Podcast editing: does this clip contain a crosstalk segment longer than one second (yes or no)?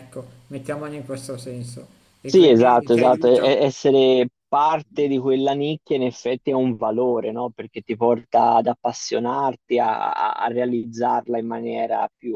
yes